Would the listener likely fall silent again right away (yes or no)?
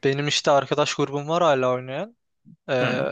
yes